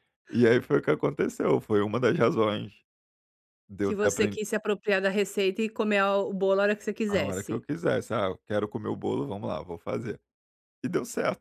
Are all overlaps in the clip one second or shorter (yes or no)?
yes